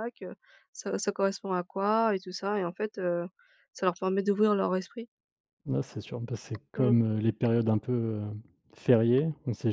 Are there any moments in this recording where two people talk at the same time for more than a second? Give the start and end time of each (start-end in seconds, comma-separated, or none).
none